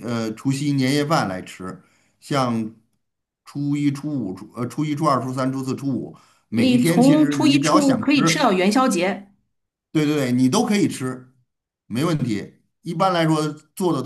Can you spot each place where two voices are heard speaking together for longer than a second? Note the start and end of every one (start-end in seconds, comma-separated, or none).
6.6-8.5